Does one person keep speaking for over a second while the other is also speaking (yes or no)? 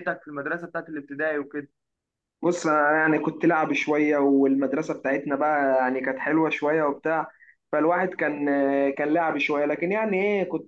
no